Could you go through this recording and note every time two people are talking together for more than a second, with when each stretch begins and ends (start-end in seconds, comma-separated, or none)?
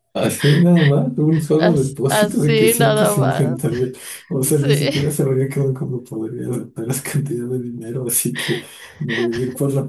1.6-3.5